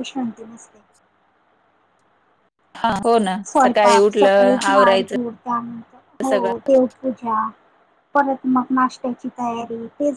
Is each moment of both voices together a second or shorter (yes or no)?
no